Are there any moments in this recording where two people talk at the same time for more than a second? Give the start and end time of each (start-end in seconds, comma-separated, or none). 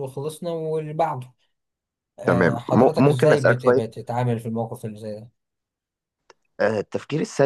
2.3-4.0